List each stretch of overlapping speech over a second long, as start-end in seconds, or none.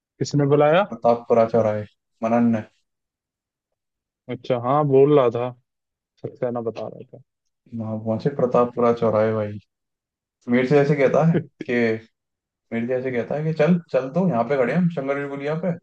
none